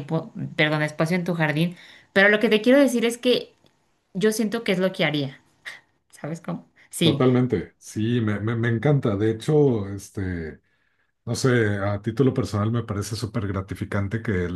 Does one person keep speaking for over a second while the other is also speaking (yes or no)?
no